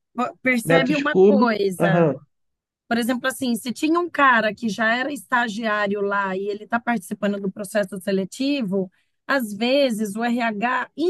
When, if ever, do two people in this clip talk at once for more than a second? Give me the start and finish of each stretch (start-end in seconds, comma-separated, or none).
0.6-2.1